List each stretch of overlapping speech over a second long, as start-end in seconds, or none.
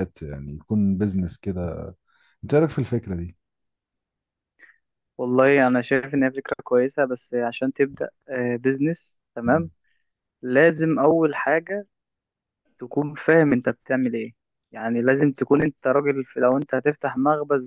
none